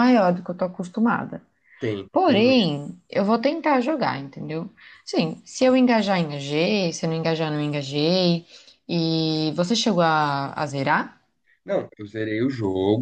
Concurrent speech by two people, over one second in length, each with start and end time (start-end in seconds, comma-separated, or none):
none